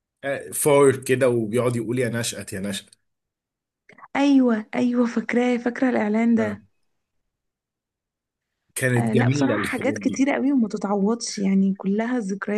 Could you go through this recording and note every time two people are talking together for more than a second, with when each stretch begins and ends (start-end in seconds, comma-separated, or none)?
9.0-10.2